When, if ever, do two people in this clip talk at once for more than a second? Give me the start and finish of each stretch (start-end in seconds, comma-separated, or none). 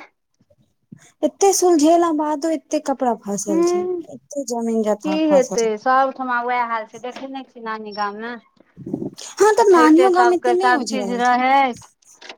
9.6-11.4